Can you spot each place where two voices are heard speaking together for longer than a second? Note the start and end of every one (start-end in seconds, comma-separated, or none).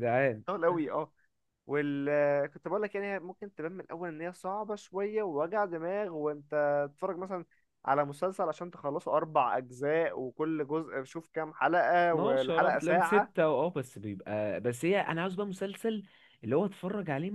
12.1-13.3